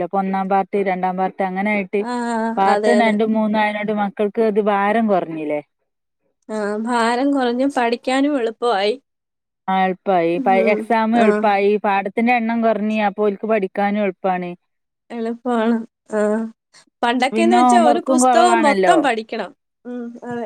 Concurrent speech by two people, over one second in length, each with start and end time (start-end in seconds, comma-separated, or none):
17.4-19.0